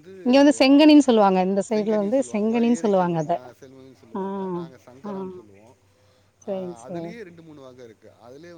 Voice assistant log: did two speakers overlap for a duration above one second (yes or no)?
yes